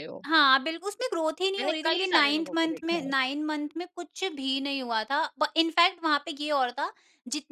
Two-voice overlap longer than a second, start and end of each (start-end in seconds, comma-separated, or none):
1.6-3.1